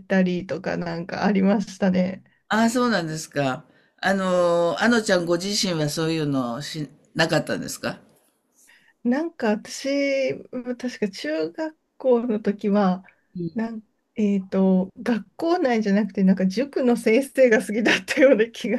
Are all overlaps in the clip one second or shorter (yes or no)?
yes